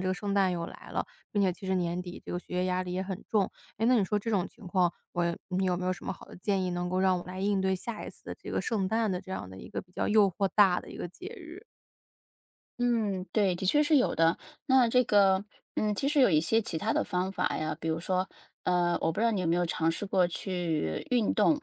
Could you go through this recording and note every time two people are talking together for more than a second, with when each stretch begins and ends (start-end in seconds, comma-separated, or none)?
none